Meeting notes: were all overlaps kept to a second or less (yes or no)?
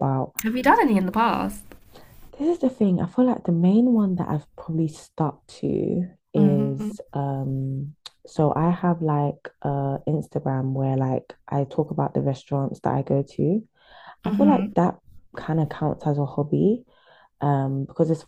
yes